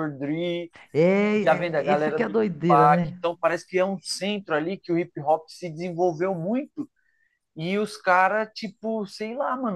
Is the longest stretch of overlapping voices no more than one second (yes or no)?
no